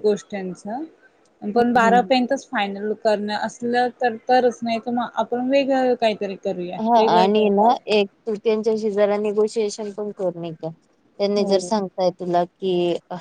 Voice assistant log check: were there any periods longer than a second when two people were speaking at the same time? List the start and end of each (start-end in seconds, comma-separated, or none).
none